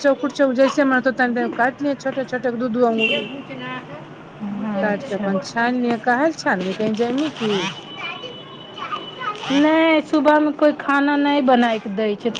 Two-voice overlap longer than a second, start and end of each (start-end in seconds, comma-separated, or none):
4.8-6.2